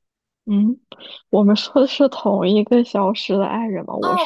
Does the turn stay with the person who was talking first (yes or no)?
no